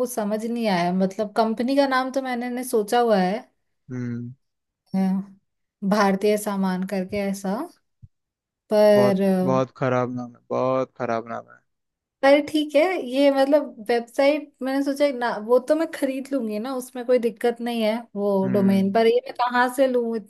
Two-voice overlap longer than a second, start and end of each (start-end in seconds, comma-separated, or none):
none